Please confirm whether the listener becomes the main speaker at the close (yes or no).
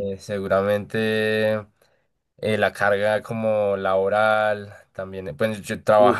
no